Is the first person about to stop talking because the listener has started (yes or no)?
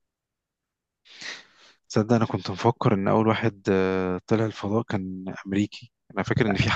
no